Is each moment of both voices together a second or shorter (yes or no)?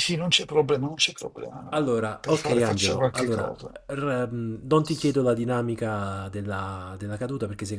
no